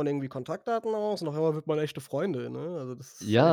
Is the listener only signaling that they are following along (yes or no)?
no